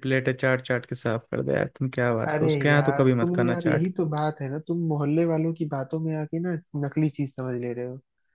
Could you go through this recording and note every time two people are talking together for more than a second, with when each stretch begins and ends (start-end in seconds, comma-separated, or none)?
2.2-3.9